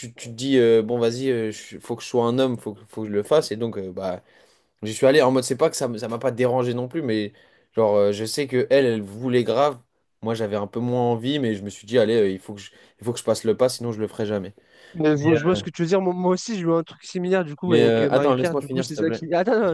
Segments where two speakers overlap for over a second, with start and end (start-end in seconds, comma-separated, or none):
17.6-19.2